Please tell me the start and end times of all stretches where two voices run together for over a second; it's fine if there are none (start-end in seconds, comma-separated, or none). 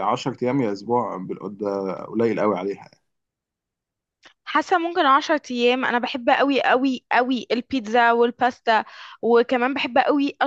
none